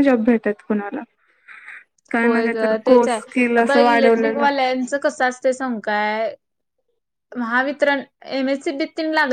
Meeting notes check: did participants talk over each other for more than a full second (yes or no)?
yes